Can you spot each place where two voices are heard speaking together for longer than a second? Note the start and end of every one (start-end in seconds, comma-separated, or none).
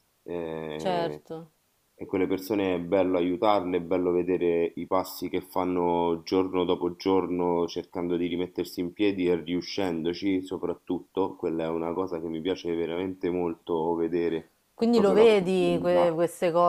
14.9-16.2